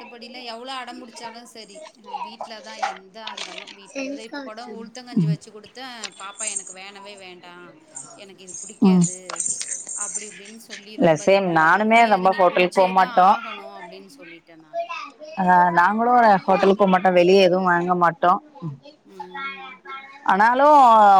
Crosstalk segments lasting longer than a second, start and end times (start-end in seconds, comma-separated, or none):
11.0-13.3